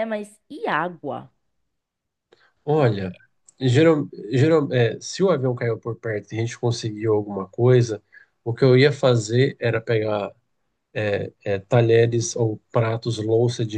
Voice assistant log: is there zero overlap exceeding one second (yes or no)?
yes